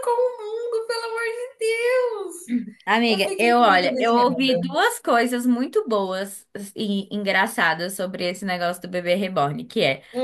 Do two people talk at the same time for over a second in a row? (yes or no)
yes